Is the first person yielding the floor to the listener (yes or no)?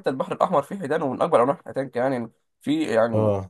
no